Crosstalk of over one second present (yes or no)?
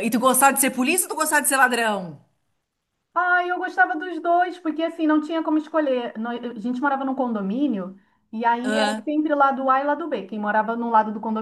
no